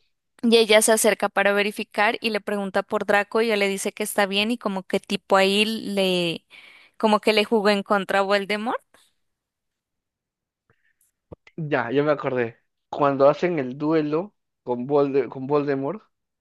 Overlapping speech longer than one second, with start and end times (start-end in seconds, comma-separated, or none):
none